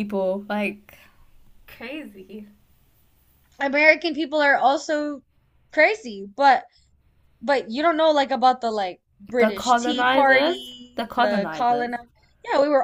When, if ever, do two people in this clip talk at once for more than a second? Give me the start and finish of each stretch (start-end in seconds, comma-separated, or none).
9.4-11.9